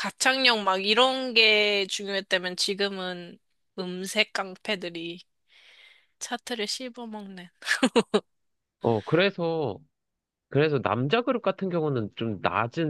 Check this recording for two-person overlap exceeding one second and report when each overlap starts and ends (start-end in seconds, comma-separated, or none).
none